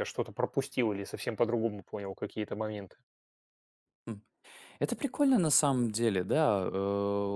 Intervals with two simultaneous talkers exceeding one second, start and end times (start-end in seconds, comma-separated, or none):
none